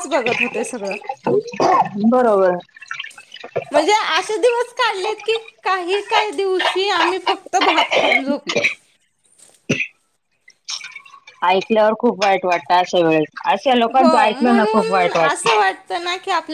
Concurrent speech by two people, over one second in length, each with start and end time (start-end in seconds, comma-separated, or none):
none